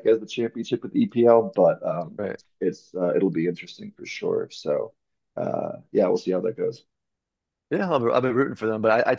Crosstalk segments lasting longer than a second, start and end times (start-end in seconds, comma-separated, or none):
none